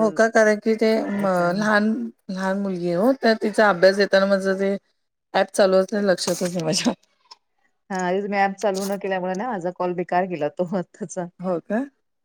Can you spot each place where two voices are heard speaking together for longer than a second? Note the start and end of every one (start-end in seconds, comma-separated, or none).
none